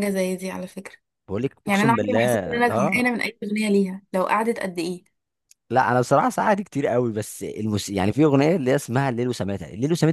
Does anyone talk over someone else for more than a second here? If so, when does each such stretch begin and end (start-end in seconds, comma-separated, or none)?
1.7-3.0